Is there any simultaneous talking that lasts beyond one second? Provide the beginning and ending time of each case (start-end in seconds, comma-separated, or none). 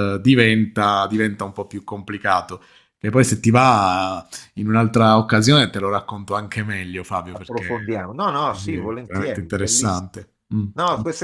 8.5-10.1